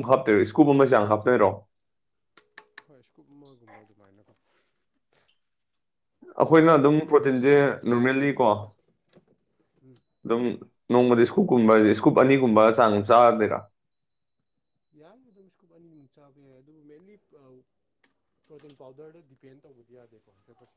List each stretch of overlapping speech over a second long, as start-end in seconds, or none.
6.5-8.4